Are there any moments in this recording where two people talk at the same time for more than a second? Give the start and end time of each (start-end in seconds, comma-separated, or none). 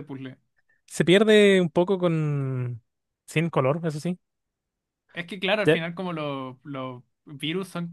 none